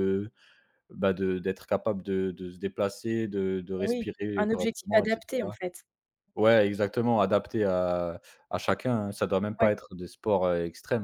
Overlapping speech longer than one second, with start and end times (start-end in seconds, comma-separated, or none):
3.8-5.6